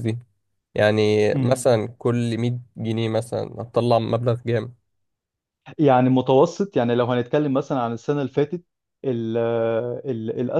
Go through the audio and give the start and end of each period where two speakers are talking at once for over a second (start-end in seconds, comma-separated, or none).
none